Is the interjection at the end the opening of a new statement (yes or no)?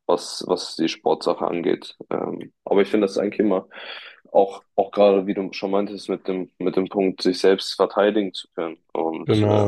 no